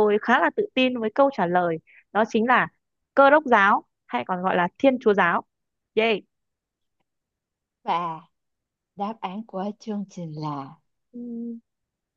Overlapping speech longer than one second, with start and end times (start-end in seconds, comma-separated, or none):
none